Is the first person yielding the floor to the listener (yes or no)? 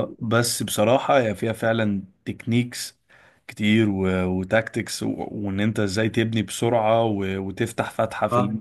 no